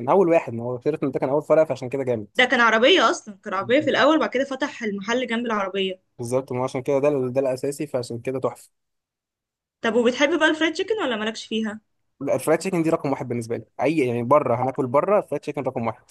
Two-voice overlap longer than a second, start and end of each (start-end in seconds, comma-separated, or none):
none